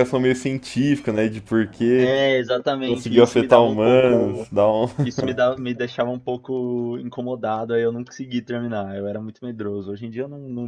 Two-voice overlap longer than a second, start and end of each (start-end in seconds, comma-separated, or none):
2.8-4.5